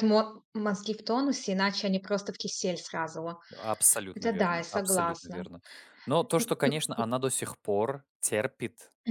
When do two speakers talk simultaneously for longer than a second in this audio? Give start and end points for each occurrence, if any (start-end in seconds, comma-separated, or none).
4.1-5.4